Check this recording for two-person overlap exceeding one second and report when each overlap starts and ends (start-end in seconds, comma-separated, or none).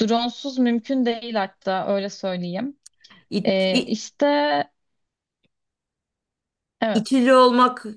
none